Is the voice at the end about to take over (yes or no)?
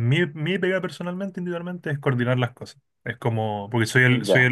no